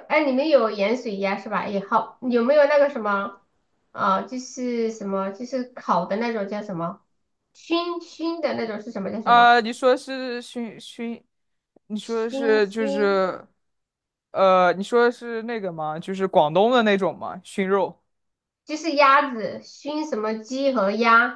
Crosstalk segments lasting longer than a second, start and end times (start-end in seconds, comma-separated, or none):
12.0-13.2